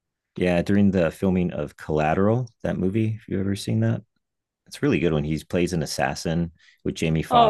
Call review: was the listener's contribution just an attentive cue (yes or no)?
yes